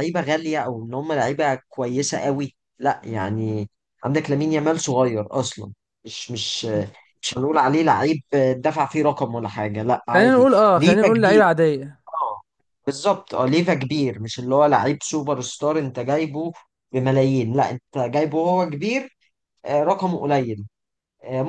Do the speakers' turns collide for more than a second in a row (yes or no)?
yes